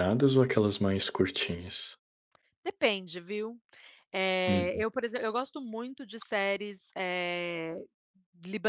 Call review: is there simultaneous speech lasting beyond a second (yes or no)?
no